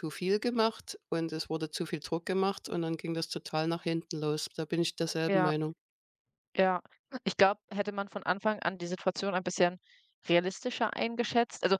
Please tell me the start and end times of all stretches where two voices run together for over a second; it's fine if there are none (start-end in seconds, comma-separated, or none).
none